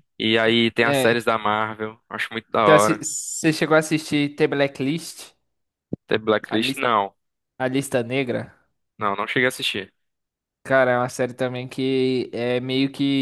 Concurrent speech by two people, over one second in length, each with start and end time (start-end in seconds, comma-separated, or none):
none